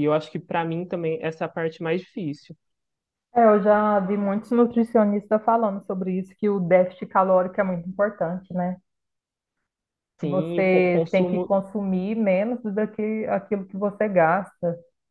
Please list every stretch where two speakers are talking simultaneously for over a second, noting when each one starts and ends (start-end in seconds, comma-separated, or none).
10.2-11.5